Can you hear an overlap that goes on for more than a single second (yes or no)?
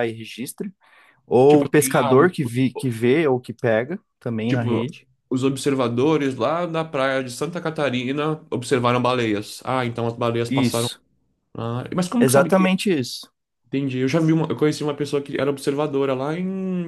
yes